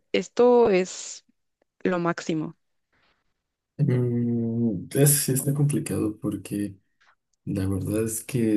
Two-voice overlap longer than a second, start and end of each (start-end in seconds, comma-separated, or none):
none